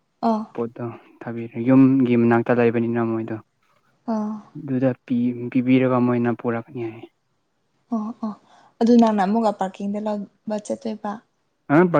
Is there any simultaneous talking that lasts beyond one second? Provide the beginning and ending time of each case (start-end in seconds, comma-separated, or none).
none